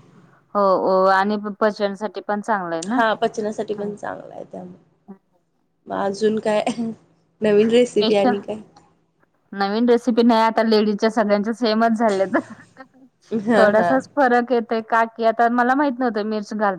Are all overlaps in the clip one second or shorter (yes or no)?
yes